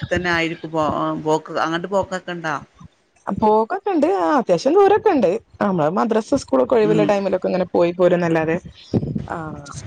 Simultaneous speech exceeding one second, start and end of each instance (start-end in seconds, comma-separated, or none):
none